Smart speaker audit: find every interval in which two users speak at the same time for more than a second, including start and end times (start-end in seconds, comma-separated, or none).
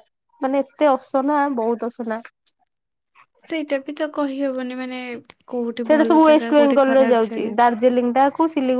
5.9-7.5